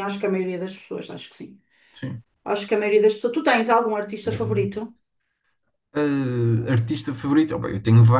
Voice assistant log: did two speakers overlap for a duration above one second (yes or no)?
no